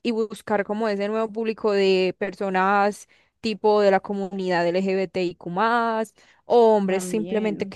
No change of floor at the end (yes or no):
yes